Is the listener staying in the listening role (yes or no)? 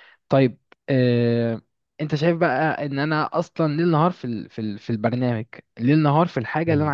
no